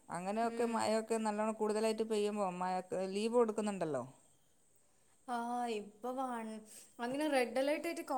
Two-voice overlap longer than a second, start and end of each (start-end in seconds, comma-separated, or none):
none